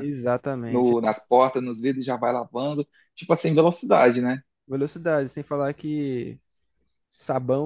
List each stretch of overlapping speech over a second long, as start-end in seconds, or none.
none